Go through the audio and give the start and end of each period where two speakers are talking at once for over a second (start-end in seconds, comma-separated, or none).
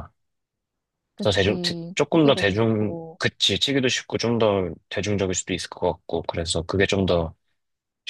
1.2-3.2